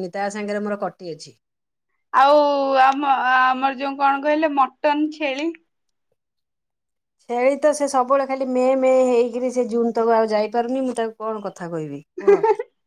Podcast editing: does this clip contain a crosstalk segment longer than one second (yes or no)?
no